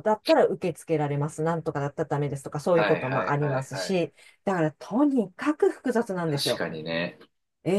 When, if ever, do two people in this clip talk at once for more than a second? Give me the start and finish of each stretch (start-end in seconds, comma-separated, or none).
2.7-4.0